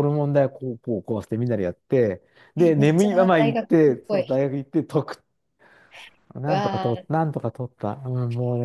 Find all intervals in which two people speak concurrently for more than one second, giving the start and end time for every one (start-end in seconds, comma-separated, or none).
2.6-4.4